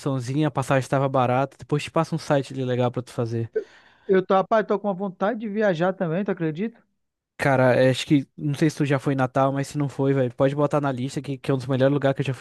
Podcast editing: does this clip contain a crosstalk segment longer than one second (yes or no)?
no